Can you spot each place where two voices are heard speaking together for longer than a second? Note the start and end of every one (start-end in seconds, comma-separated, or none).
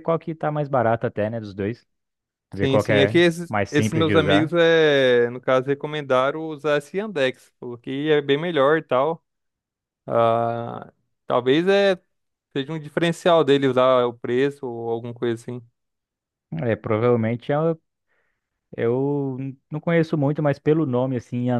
2.6-4.5